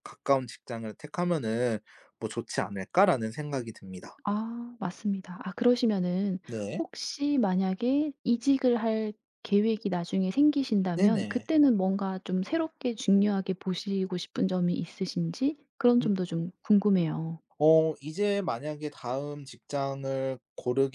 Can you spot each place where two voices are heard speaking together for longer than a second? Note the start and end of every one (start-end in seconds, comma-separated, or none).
none